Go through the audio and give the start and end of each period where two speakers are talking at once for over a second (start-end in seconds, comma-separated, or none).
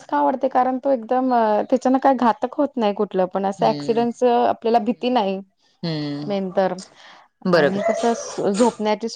none